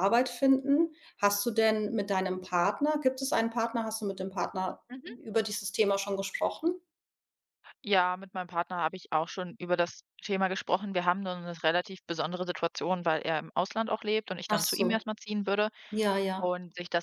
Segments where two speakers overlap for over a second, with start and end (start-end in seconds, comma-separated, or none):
none